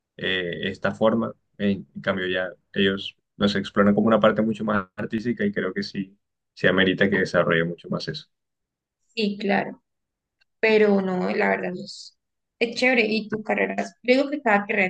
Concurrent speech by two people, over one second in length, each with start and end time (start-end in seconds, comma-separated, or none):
none